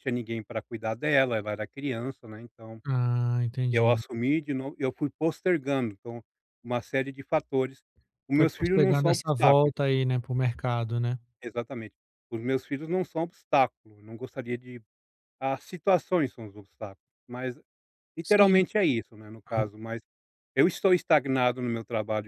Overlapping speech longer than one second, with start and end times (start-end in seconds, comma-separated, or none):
8.3-9.7